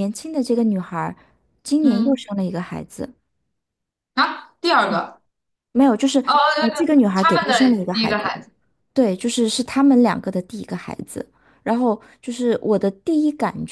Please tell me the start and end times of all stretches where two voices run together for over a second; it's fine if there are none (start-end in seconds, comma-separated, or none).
6.2-8.3